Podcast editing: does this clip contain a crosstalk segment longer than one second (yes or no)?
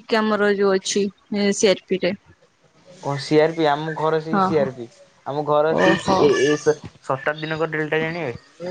no